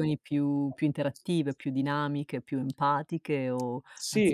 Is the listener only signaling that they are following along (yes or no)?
no